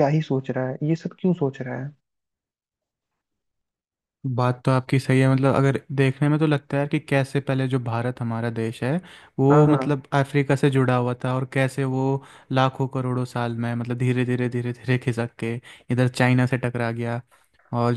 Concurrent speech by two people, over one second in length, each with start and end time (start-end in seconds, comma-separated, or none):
none